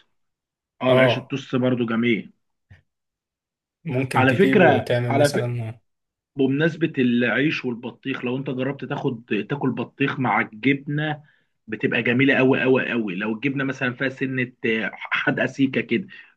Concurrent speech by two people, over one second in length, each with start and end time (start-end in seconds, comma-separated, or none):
4.1-5.5